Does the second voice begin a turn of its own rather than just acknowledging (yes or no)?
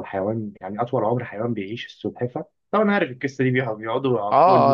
yes